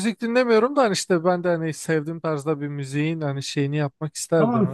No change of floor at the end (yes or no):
no